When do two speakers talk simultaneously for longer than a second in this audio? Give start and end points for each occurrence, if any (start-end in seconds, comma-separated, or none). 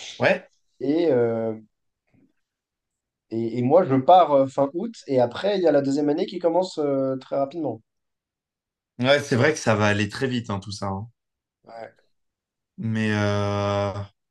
none